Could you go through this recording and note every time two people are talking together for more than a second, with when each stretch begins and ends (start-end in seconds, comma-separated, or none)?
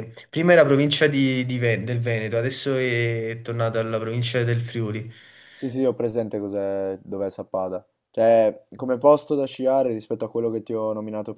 none